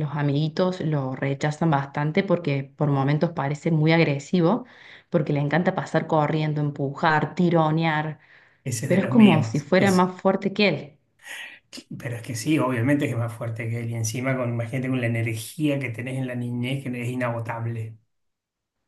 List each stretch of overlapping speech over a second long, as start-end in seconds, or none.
8.8-10.1